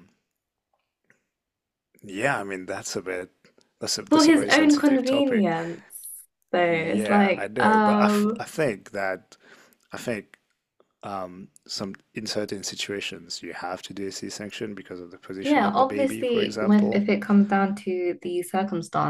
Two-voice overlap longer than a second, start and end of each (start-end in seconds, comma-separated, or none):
4.1-5.5, 6.7-8.4, 15.4-17.1